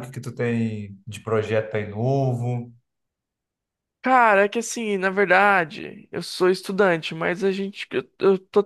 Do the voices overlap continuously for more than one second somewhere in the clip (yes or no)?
no